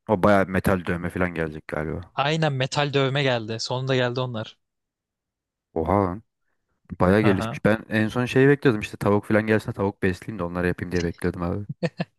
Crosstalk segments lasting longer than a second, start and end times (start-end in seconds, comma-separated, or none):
none